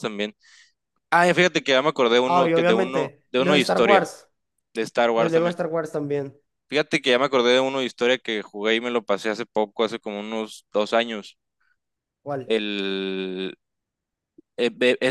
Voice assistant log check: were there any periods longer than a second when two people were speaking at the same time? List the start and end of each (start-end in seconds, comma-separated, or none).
2.2-4.1